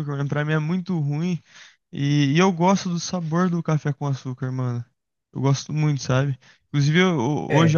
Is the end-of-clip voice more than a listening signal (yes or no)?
no